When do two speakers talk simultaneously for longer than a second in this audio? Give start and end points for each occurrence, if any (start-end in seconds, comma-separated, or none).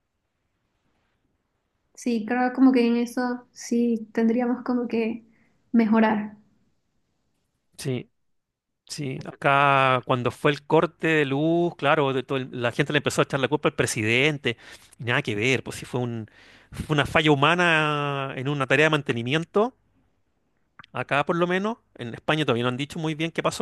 none